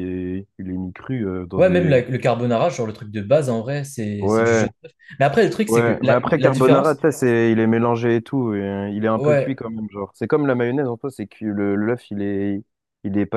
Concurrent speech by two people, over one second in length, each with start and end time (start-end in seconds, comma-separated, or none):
5.7-7.1